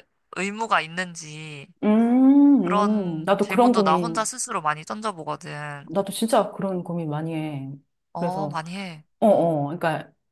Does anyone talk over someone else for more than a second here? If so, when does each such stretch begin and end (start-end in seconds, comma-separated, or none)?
2.6-4.3